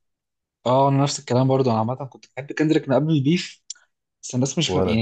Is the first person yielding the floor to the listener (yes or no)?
no